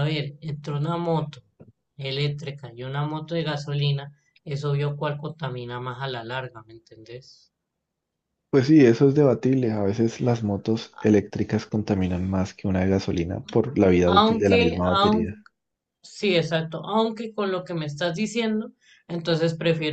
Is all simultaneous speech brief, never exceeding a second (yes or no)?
no